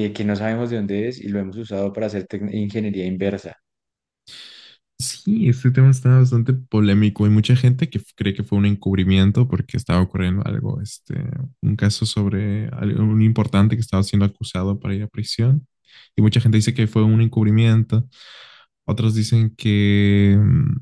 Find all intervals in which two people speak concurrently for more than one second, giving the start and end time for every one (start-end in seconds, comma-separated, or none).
none